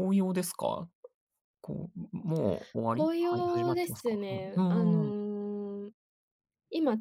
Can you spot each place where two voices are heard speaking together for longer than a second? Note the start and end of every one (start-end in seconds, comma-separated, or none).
2.9-5.2